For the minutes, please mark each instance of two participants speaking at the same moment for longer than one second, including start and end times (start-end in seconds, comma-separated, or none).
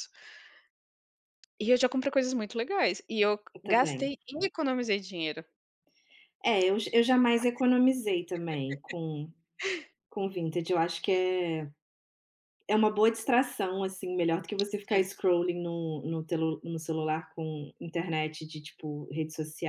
none